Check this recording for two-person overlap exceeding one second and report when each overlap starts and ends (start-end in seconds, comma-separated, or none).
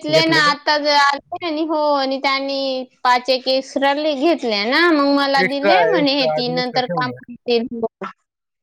5.4-7.1